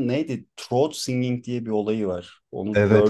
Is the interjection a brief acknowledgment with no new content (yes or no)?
no